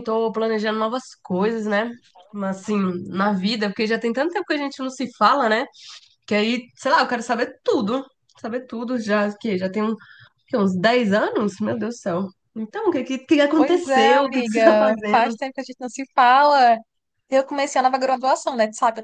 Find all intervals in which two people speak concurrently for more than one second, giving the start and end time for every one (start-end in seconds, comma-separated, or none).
13.5-15.3